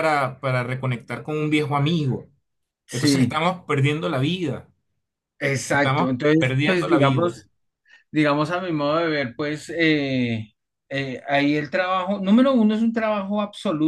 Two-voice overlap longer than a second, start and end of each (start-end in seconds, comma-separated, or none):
5.7-7.3